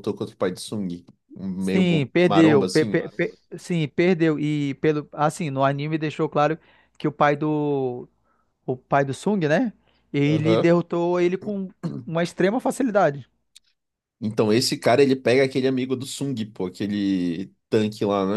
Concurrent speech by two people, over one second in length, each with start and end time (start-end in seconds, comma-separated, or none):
1.6-3.0